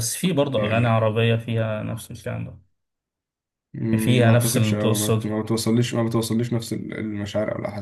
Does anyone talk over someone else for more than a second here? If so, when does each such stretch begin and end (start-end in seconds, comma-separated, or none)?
4.0-5.3